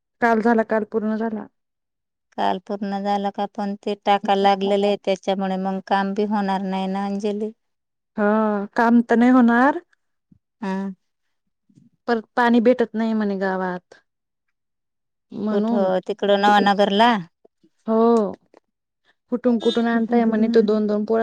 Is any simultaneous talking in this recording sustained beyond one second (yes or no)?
no